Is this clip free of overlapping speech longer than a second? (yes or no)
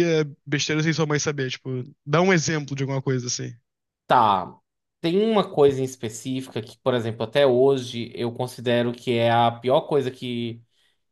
yes